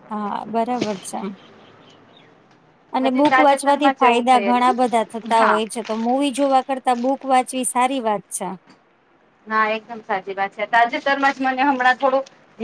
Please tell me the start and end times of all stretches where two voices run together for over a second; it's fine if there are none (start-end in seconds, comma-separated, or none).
3.1-5.6